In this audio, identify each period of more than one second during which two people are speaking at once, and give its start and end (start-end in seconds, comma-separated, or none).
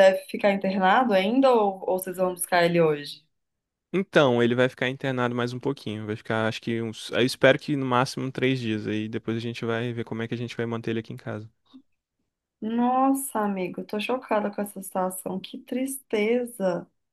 none